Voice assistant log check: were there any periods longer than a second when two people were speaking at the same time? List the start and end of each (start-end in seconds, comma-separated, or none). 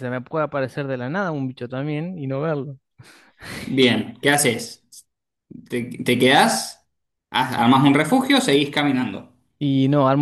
none